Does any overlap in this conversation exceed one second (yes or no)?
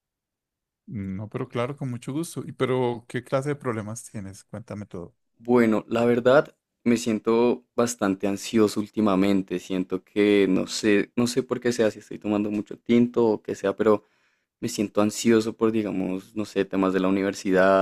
no